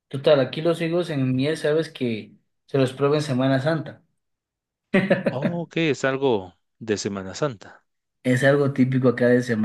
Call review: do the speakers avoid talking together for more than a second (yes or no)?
yes